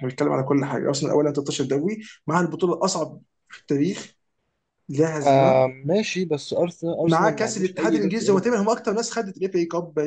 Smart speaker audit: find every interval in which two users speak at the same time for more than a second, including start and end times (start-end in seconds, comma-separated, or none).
7.0-8.6